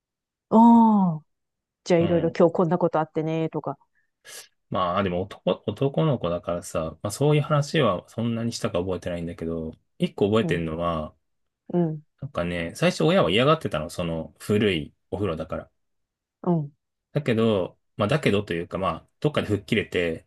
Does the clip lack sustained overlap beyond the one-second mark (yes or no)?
yes